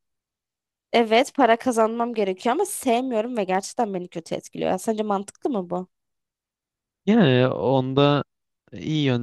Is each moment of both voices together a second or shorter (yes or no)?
yes